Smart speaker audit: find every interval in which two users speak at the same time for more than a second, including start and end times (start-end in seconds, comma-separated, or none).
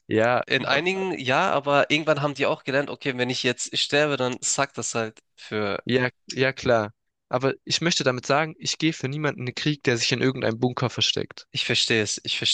none